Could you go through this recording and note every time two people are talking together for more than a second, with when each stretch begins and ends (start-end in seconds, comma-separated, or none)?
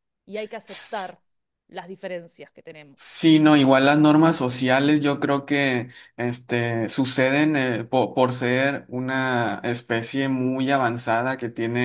none